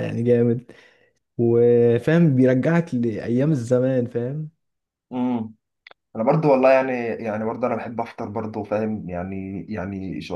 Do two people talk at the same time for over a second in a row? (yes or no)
no